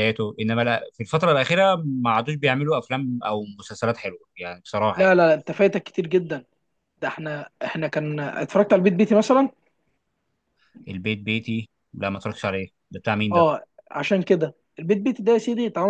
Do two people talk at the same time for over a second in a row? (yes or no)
no